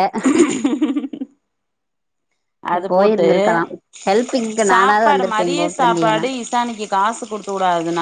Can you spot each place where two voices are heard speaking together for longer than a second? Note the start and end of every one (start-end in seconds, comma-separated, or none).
4.7-6.2